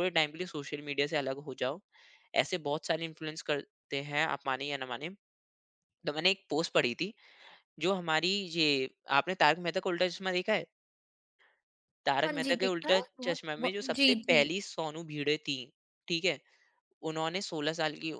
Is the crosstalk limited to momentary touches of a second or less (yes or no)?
no